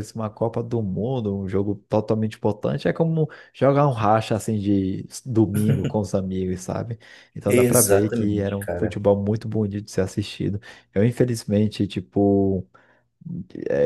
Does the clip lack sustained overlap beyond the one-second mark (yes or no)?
no